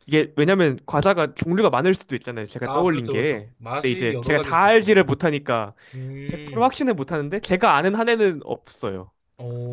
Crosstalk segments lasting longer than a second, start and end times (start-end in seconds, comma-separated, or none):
2.6-5.0